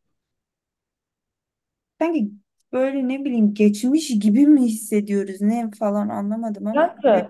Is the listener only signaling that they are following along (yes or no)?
no